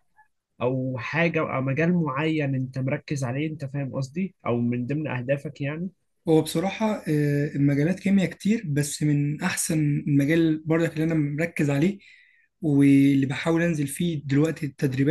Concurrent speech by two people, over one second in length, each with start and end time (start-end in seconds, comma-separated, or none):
none